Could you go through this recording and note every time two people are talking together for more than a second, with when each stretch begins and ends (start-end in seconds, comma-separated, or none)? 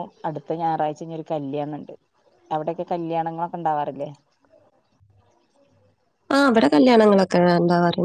none